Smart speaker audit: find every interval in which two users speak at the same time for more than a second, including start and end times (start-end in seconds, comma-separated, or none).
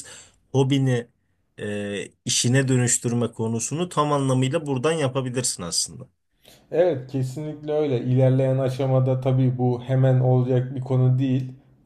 none